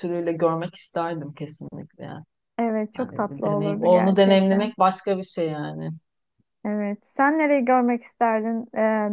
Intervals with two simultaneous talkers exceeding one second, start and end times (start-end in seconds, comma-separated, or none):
3.0-4.7